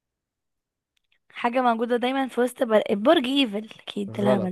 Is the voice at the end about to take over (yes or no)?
yes